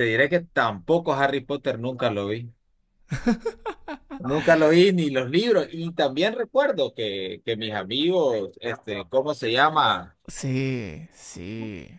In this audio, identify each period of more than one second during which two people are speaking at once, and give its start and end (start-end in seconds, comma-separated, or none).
none